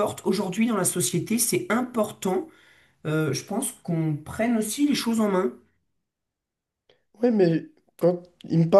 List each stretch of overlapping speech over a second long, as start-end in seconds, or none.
none